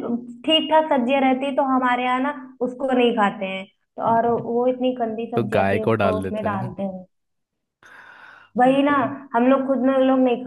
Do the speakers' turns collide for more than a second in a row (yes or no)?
yes